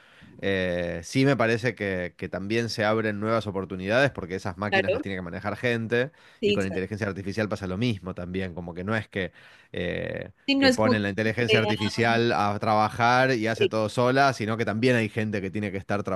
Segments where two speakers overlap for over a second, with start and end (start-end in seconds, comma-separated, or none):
10.5-11.7